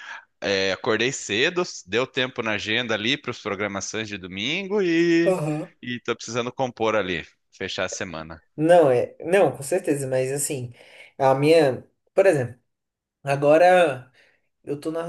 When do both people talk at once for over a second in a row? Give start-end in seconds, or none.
none